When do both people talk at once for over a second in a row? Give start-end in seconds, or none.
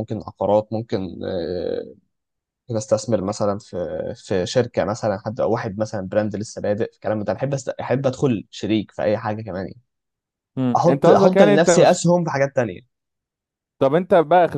10.8-12.0